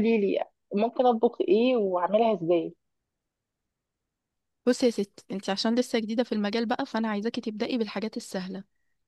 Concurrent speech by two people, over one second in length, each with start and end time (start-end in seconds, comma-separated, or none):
none